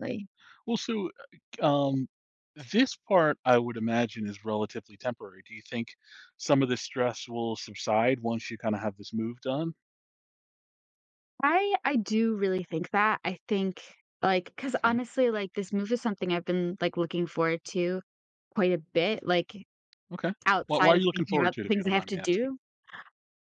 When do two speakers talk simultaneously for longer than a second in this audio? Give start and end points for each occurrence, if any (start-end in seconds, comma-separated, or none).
20.5-22.5